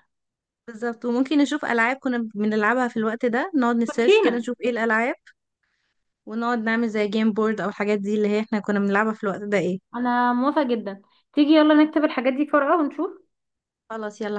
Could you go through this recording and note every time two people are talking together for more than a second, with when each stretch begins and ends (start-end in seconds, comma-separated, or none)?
none